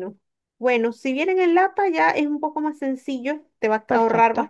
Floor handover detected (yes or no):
no